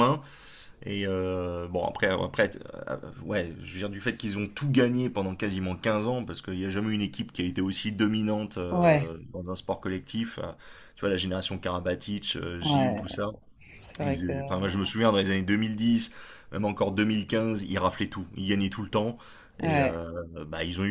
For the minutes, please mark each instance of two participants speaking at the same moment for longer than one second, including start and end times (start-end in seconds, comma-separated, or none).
none